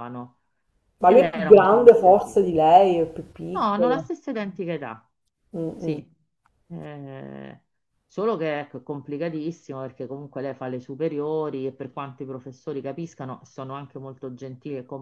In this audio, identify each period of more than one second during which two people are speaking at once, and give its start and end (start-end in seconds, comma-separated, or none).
1.0-2.5